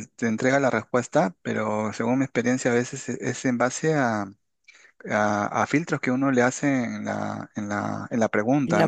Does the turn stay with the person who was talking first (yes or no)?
yes